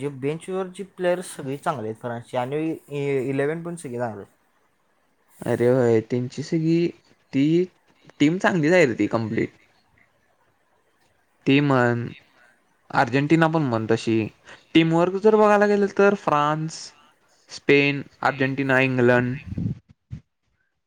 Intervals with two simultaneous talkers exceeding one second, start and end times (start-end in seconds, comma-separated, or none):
none